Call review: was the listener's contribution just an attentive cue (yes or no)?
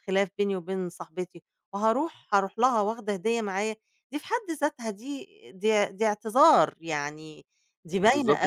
no